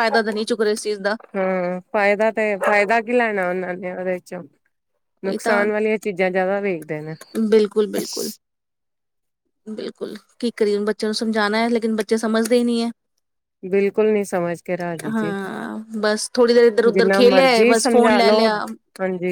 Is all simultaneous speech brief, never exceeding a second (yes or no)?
no